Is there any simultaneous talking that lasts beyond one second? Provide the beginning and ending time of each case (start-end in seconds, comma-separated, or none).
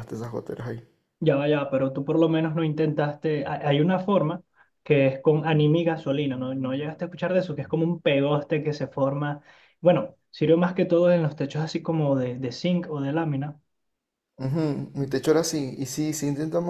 none